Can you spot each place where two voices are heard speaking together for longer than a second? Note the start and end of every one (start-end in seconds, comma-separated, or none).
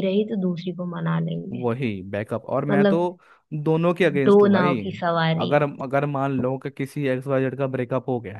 none